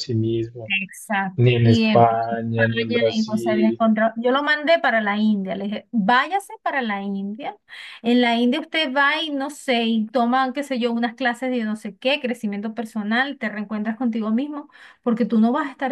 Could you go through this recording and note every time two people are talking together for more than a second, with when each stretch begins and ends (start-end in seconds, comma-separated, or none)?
1.4-3.8